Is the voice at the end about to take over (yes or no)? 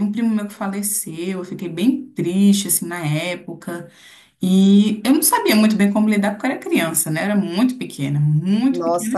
yes